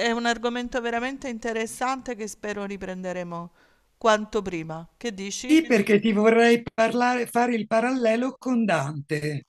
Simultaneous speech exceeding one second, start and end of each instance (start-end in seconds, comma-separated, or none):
none